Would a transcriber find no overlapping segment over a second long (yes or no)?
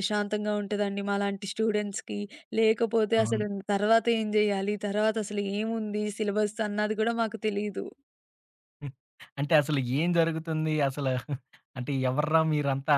yes